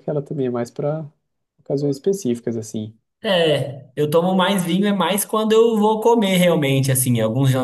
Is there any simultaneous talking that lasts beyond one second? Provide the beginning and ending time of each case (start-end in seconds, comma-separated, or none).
none